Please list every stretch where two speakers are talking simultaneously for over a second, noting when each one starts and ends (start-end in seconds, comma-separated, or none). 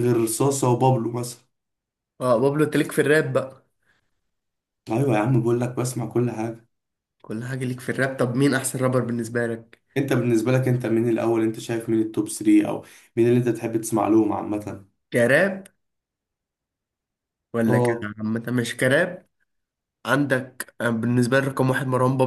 none